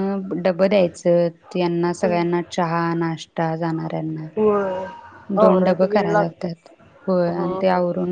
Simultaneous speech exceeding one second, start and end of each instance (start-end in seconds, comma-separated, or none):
5.4-6.7